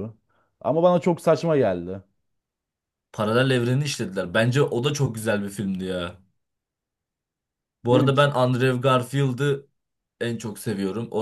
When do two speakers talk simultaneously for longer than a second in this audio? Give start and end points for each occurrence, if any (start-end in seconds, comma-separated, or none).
none